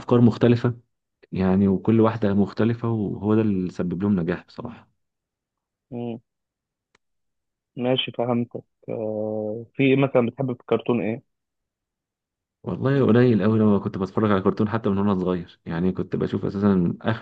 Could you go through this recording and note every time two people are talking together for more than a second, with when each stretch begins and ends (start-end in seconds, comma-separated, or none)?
none